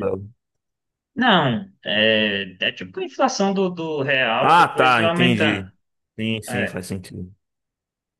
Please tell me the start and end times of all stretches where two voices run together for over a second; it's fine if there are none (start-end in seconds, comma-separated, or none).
4.4-5.7